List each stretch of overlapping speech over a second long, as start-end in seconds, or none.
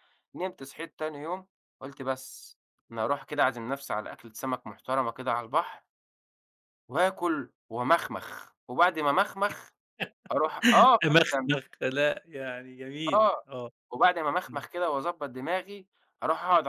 none